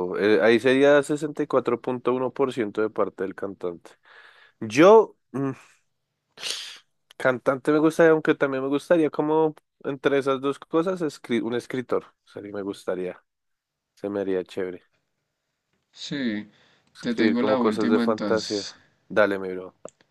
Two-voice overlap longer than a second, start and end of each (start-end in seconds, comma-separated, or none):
17.0-18.7